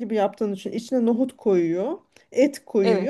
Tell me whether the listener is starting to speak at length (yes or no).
no